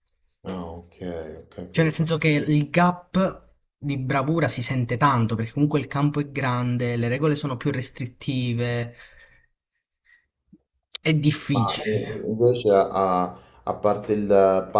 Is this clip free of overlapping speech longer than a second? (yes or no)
yes